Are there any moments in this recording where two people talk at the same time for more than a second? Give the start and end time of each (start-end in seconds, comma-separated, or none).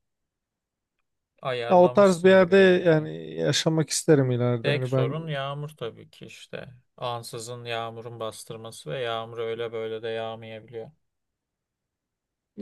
1.7-3.1